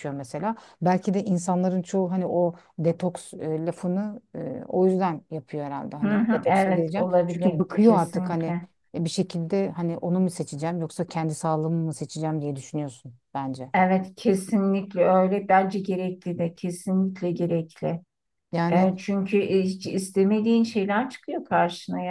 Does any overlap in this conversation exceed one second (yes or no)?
yes